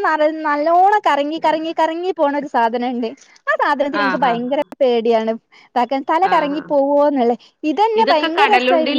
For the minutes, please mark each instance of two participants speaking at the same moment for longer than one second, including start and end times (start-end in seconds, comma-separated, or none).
none